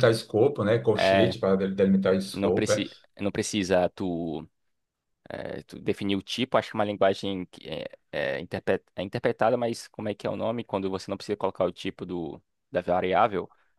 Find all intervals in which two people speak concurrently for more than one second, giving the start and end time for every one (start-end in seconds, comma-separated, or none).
none